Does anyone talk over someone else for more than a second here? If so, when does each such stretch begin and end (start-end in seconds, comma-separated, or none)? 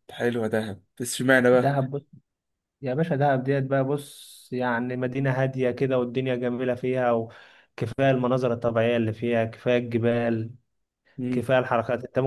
none